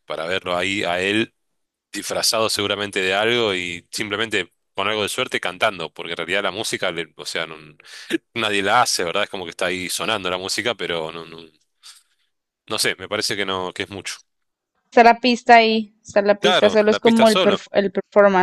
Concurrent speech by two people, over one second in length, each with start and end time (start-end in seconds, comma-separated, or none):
16.4-17.6